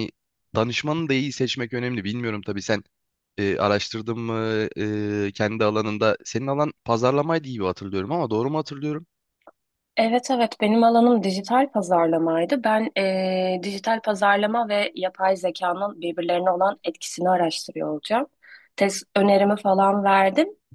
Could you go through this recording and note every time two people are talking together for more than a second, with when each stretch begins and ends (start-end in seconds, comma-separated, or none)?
none